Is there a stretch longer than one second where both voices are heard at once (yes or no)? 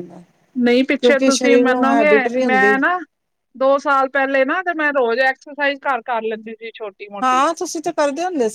yes